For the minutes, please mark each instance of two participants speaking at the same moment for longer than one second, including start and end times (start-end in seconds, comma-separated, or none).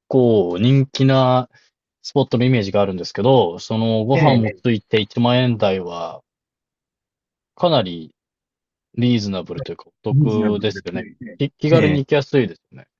10.1-12.0